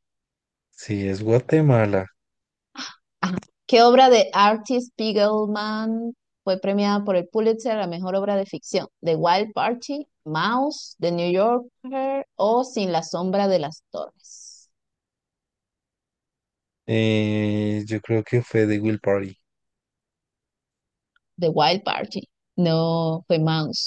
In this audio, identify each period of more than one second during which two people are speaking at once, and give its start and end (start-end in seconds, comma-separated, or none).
none